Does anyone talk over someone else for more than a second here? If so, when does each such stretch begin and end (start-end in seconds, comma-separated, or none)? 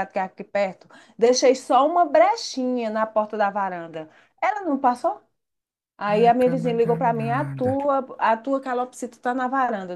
6.1-7.7